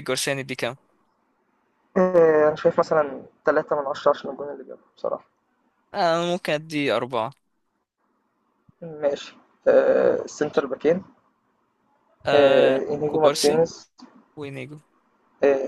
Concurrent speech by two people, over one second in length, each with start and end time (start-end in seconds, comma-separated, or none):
12.3-13.6